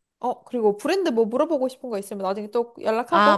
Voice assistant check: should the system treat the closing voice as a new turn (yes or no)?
yes